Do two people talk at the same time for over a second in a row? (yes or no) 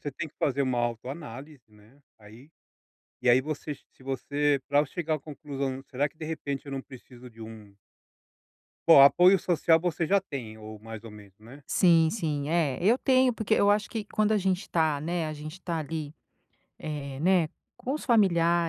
no